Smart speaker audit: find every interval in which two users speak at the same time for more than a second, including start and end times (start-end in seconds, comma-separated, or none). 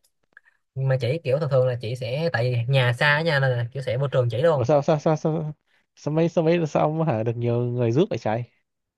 none